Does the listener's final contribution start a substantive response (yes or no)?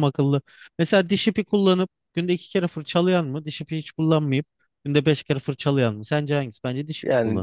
yes